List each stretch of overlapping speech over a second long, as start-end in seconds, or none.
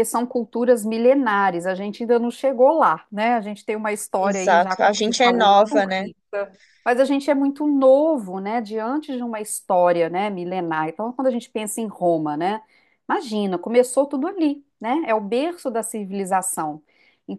4.1-6.1